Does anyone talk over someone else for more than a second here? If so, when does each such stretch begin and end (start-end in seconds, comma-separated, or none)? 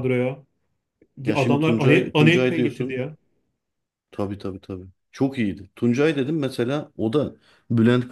1.3-3.0